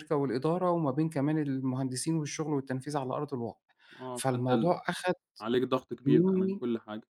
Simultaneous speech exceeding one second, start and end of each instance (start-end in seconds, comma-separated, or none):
none